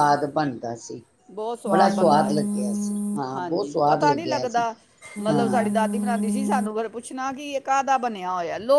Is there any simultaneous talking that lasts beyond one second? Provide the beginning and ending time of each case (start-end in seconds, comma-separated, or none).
3.4-4.6